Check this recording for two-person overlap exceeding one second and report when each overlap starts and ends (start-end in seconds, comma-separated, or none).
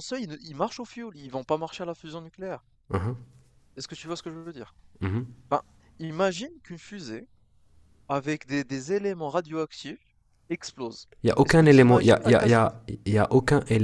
11.2-12.8